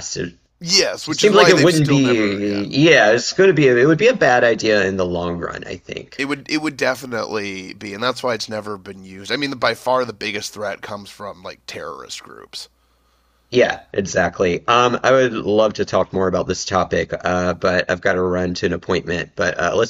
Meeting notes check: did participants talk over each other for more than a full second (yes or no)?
yes